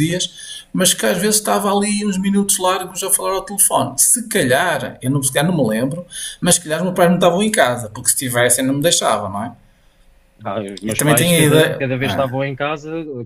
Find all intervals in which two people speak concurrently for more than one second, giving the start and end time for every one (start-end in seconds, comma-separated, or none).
10.8-12.3